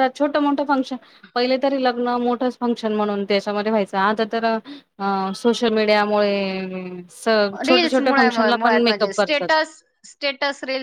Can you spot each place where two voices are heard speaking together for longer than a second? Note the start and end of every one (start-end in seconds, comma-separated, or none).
7.7-9.5